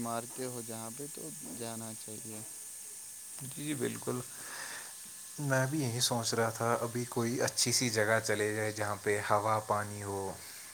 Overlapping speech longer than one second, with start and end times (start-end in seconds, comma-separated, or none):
none